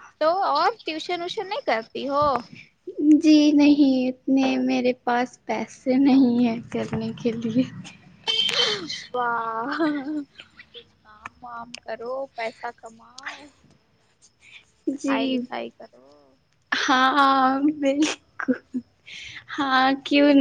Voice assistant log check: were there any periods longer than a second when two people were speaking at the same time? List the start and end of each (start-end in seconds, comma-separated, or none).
none